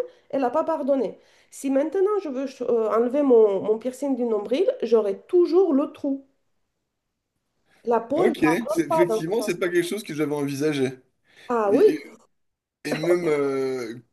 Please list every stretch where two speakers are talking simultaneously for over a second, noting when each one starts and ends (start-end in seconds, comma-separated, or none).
8.2-9.7